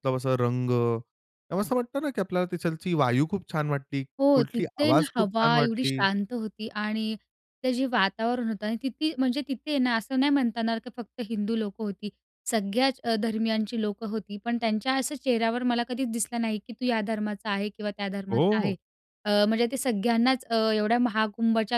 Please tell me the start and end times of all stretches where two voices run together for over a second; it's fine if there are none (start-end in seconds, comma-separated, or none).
4.2-6.0